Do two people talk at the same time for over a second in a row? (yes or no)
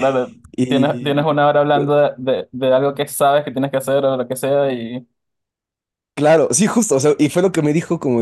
yes